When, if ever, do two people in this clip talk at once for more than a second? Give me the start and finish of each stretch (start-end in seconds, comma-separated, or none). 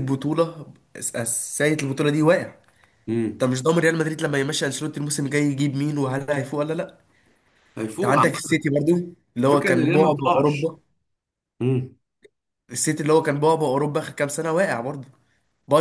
9.4-10.7